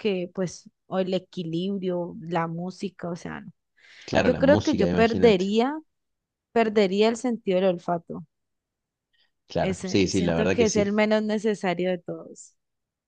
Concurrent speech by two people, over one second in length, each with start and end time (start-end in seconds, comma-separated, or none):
4.2-5.5, 9.6-10.9